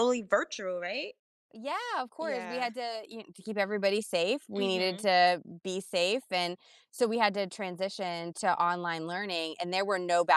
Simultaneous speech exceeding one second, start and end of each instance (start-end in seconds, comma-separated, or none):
none